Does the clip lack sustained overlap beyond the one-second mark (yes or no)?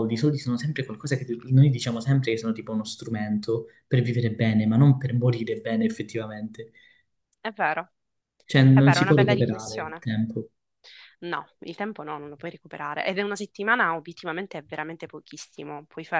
no